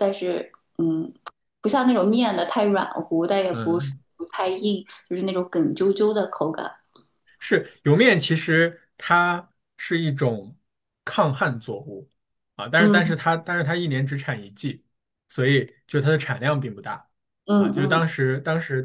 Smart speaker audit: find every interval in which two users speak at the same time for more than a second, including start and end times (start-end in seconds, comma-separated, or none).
none